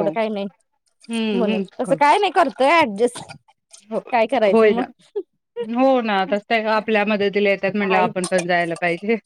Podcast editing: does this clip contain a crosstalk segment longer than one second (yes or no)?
no